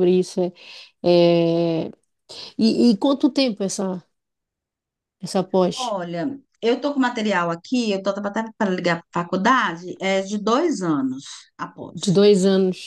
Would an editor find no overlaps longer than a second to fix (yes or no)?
yes